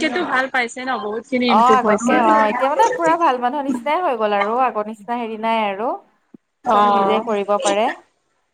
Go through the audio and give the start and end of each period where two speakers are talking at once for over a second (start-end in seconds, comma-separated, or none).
none